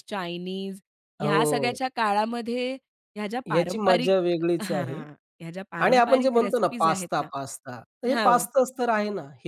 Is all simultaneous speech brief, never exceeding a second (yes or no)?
no